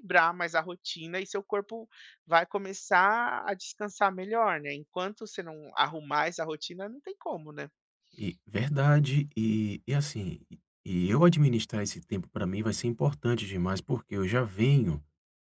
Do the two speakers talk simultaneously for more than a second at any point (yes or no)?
no